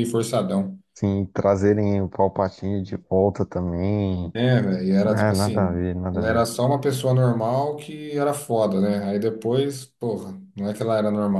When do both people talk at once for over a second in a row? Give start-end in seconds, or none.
5.0-6.5